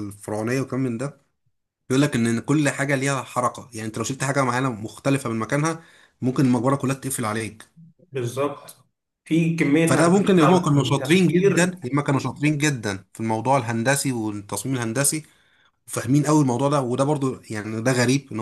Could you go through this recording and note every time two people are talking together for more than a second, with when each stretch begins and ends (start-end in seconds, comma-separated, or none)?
9.9-11.8